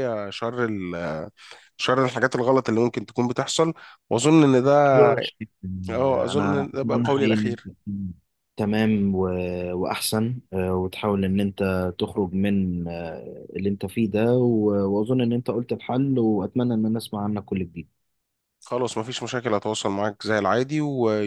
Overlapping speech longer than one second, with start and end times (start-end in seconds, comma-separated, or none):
6.0-7.7